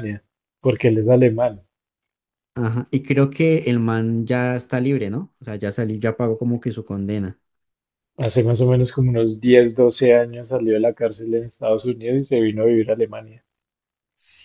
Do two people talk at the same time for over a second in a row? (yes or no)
no